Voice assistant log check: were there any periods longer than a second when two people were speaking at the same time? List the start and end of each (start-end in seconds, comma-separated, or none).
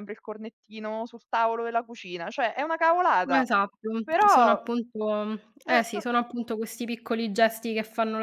none